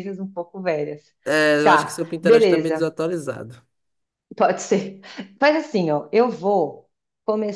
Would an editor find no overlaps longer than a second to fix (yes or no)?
no